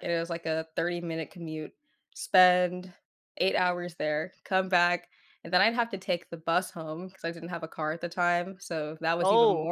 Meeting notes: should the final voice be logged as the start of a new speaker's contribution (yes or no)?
no